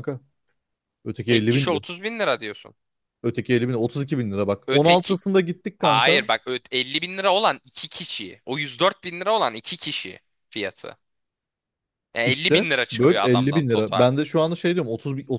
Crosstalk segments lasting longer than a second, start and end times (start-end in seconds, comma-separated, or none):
12.2-14.1